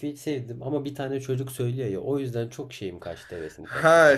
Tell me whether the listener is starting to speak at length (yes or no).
yes